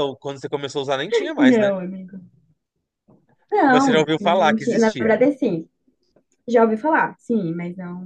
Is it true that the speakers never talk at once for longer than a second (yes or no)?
no